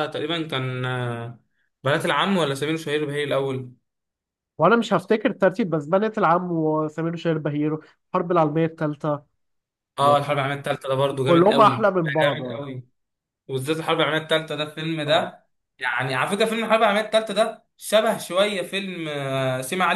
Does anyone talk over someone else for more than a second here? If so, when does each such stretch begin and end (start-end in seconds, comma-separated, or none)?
11.2-12.6